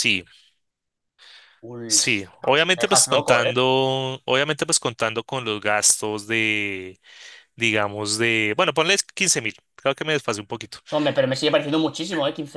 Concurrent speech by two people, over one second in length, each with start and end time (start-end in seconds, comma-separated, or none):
1.9-3.5